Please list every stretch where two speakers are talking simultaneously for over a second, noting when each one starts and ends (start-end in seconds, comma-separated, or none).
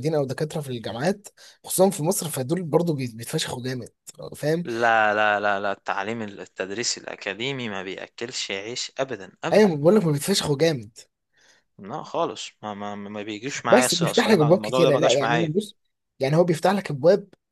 13.7-15.5